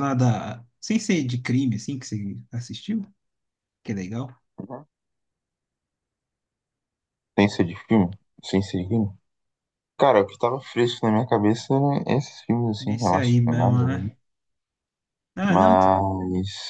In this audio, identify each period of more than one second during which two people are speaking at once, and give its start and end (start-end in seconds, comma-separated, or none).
12.8-14.1